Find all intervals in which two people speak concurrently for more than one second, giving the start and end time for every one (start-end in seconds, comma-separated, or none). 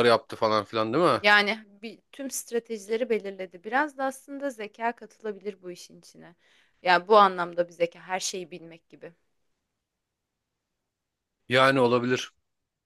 none